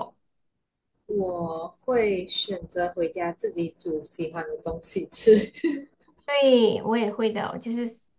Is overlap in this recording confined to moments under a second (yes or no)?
yes